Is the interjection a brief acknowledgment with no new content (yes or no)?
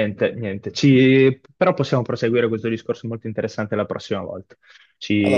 yes